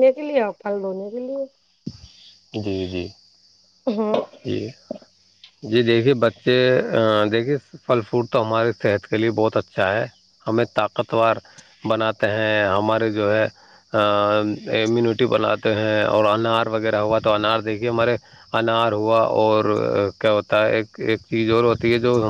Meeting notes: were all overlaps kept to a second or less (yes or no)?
yes